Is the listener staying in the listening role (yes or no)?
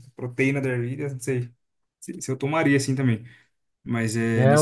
no